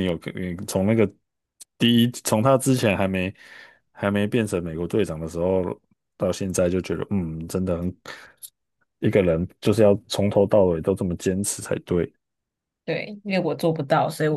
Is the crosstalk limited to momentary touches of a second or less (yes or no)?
yes